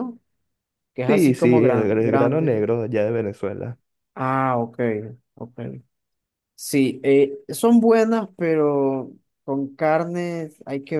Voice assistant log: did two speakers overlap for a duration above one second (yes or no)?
yes